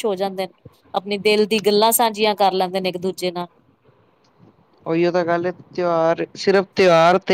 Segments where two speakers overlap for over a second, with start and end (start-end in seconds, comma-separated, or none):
none